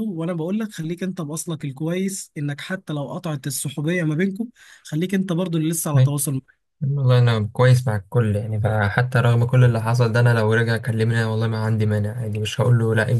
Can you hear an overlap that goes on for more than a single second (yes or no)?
no